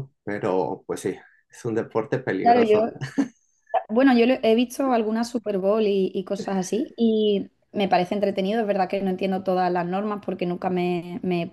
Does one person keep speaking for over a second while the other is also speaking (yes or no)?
no